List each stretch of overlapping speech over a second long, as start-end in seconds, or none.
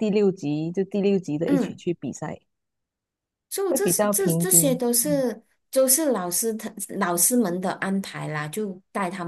3.7-5.2